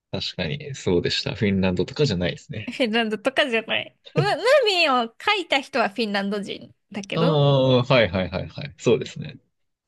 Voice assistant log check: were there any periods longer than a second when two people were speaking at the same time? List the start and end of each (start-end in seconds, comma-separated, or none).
none